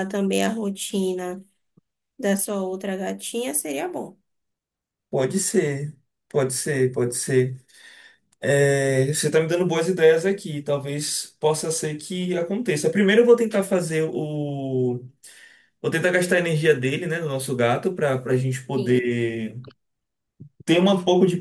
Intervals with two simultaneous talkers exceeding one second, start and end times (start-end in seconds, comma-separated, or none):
none